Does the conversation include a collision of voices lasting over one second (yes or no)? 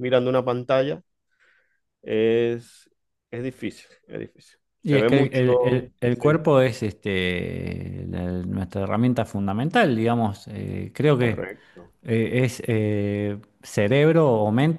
no